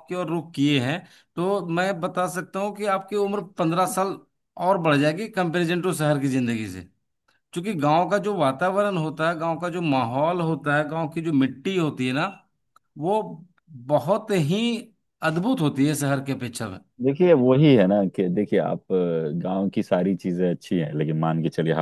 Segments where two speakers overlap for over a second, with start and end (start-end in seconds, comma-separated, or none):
none